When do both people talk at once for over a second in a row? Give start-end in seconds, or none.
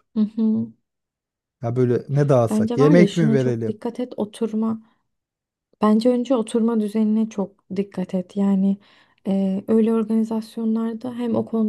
2.5-3.8